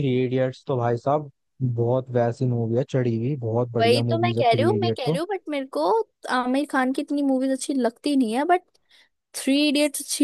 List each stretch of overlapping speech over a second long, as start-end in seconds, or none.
3.8-5.2